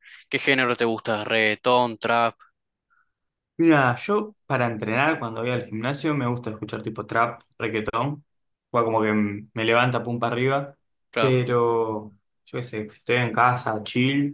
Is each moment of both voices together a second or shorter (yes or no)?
yes